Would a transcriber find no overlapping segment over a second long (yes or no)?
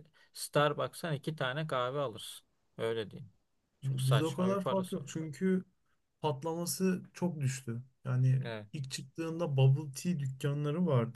no